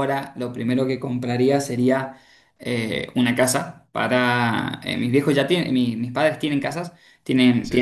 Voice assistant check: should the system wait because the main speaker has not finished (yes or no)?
yes